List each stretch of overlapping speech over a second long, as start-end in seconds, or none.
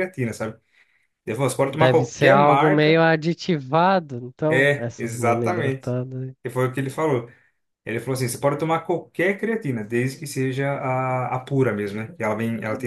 1.6-3.0, 4.5-6.0